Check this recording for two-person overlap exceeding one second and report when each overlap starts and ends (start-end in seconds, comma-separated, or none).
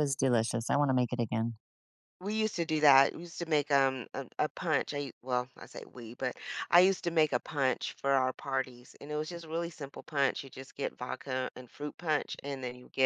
none